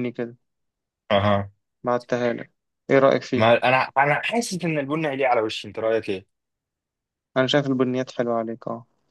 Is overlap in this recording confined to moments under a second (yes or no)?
yes